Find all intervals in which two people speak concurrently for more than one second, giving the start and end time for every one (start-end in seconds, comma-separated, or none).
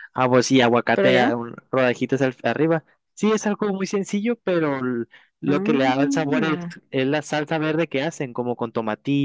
5.5-6.7